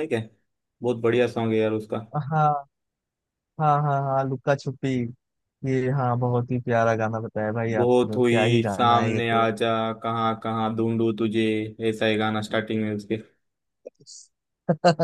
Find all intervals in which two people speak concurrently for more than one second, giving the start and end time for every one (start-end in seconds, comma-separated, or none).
7.8-9.4